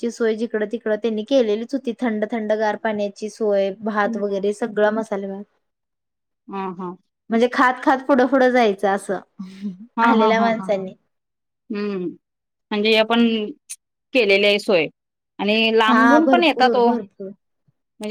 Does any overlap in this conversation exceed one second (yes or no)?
yes